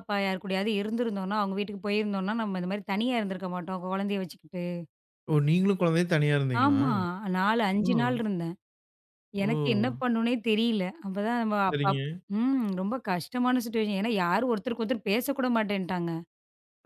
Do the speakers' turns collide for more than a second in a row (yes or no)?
no